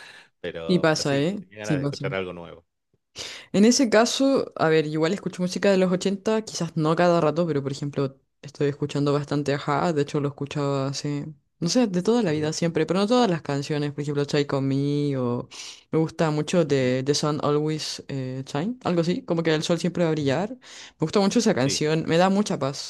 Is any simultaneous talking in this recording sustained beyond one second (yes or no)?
yes